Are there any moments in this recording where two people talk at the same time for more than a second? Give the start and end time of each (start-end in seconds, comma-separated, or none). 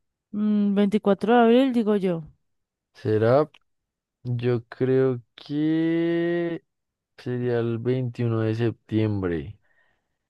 none